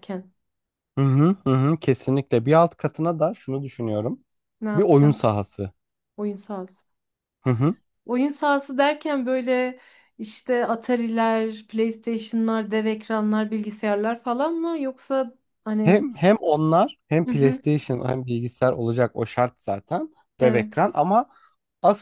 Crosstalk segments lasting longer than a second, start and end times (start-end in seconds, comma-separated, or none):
none